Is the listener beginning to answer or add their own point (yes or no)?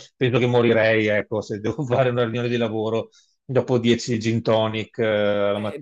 yes